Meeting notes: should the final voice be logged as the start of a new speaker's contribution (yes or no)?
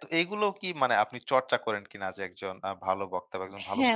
yes